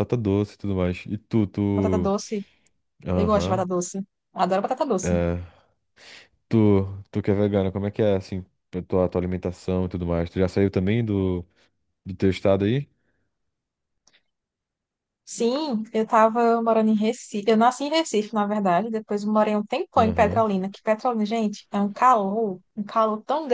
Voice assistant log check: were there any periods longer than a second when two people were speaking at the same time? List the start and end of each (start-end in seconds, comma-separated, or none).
none